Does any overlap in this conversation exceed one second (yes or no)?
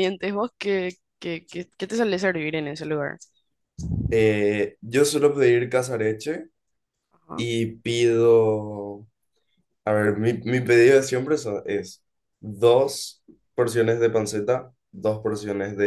no